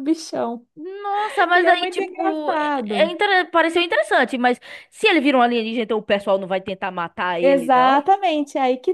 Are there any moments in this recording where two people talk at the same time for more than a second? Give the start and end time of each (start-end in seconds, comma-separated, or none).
1.5-3.1